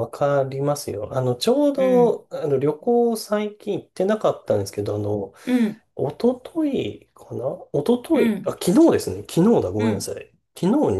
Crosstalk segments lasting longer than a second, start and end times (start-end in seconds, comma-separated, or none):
none